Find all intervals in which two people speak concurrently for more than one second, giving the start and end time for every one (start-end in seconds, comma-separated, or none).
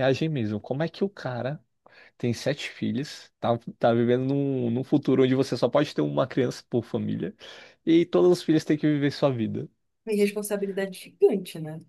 none